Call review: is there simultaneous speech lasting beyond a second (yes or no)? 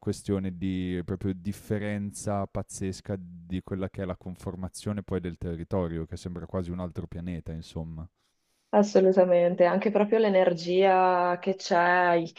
no